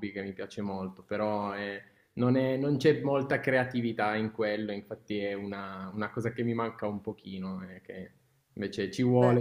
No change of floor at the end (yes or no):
yes